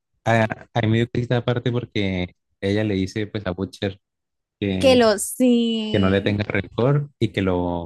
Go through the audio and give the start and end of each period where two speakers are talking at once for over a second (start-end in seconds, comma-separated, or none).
none